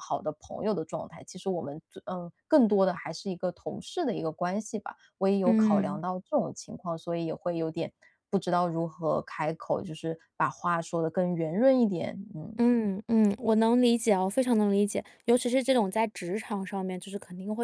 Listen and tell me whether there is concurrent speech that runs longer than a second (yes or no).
no